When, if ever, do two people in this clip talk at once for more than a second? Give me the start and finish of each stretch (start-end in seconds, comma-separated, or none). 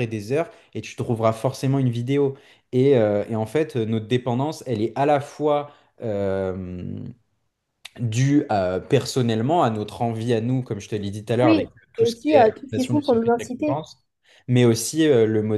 11.4-13.8